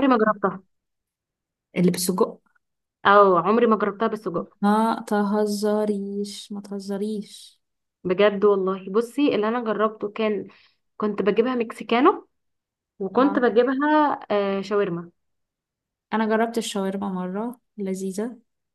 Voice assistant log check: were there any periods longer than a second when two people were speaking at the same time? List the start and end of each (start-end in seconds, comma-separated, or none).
none